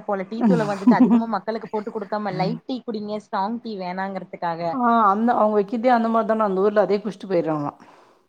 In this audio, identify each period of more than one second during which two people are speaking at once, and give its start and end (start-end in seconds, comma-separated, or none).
none